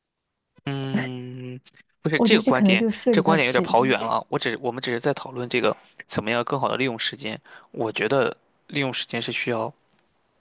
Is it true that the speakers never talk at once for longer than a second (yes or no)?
no